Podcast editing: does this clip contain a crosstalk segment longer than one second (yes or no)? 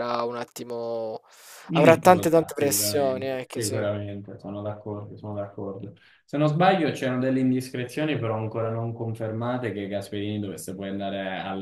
yes